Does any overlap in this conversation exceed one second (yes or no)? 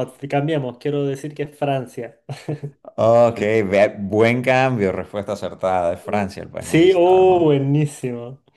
yes